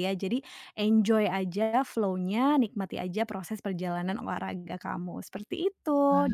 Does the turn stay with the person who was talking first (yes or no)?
yes